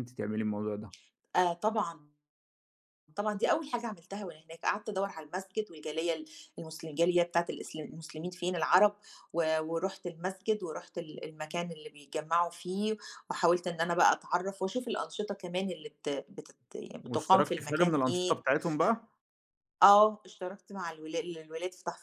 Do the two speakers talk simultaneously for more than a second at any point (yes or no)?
yes